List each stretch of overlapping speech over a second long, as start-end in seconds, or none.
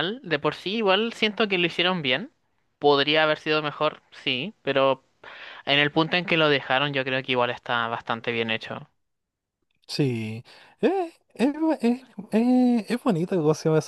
none